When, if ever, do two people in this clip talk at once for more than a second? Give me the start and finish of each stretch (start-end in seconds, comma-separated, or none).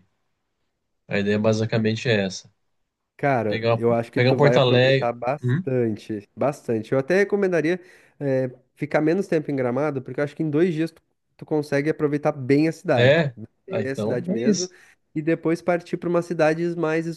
3.5-5.6, 12.9-14.7